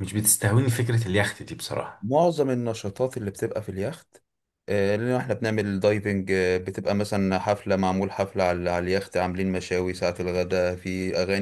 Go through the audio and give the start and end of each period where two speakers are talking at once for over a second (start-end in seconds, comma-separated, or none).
none